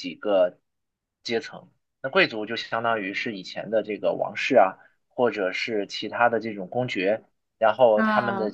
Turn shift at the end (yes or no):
no